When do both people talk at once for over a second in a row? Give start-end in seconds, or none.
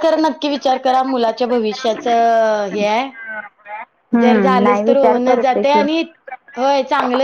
4.2-5.8